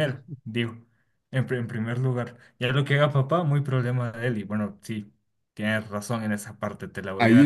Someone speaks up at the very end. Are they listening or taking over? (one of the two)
taking over